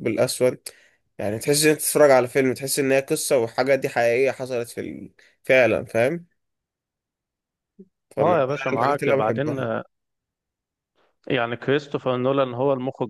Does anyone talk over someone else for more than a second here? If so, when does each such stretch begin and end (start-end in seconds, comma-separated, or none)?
8.2-9.6